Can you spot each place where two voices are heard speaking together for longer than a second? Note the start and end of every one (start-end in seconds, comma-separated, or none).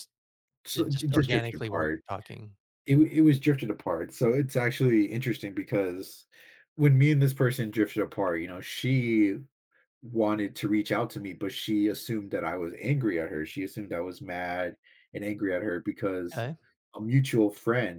0.7-2.0